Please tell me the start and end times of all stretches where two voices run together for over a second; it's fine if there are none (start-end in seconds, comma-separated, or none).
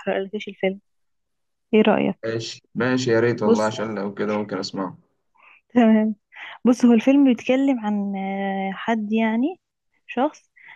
none